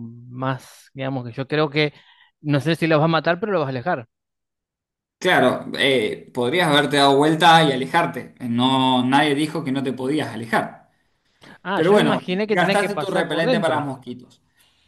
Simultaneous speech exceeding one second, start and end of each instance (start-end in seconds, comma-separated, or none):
11.7-13.9